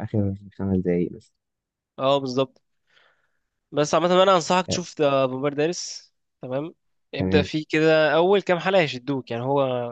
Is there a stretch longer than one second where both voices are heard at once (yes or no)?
no